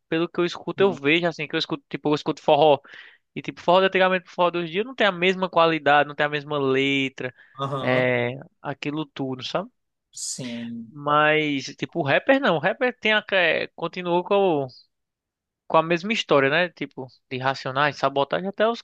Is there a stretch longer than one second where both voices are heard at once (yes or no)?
no